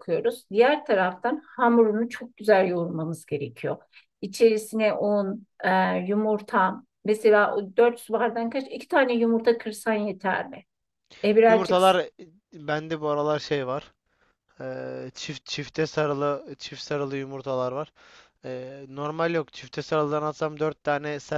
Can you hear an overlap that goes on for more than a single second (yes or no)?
no